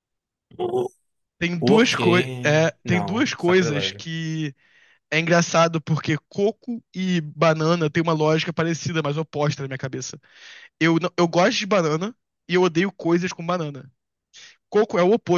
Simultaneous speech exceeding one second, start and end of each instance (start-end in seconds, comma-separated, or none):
1.6-4.1